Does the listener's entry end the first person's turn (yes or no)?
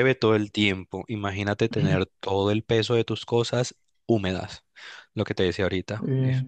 no